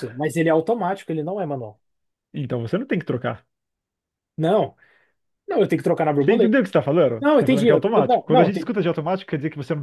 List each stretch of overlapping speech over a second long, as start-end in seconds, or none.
7.2-8.7